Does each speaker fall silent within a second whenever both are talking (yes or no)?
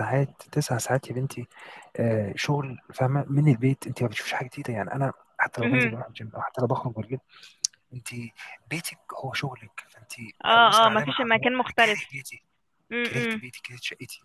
no